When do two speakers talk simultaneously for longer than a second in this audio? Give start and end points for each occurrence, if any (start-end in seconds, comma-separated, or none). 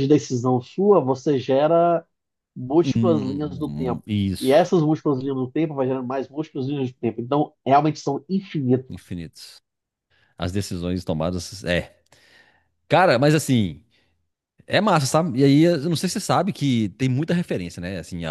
2.8-4.8